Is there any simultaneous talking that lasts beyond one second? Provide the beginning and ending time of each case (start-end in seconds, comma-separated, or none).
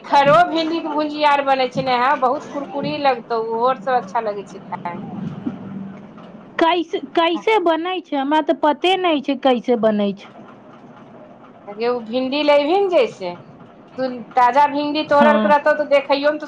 none